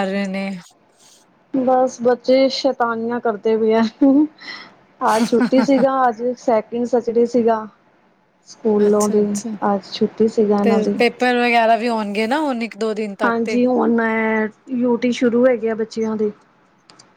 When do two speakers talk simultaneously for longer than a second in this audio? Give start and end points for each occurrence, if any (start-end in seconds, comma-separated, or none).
none